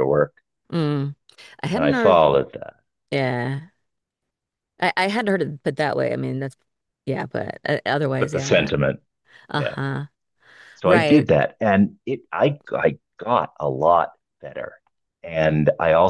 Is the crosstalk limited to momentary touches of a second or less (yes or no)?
yes